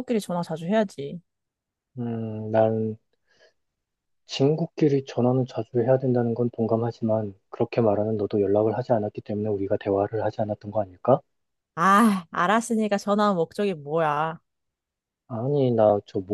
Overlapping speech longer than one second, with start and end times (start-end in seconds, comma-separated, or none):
none